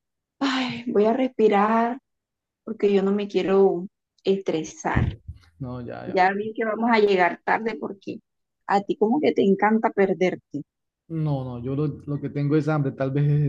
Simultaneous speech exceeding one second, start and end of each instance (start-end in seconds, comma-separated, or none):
none